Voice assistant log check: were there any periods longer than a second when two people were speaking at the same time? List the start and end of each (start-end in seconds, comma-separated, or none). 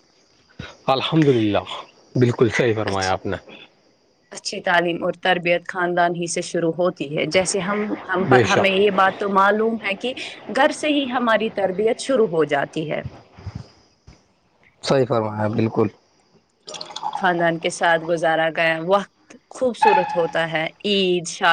none